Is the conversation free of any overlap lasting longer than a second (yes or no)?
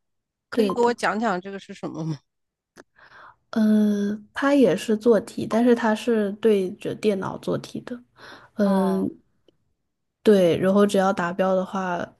yes